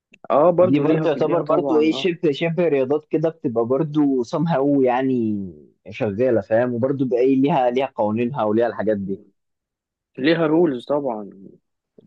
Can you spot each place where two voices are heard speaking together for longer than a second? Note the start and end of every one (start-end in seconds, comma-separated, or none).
0.6-2.1